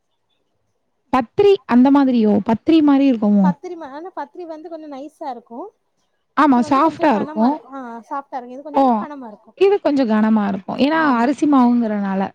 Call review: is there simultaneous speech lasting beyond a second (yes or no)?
no